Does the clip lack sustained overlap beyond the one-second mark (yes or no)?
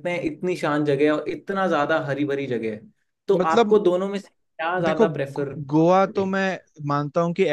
no